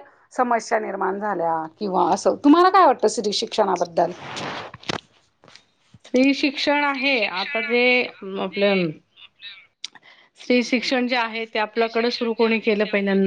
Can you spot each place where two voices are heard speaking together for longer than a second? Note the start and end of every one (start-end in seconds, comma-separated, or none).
none